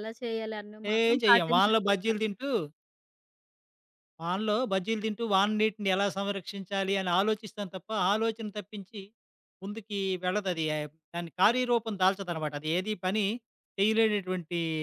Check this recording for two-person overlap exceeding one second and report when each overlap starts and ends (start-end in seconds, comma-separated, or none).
0.9-2.5